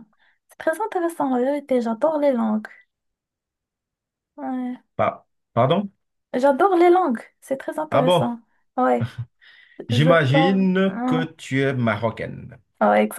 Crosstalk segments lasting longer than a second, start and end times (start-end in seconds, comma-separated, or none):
9.9-11.3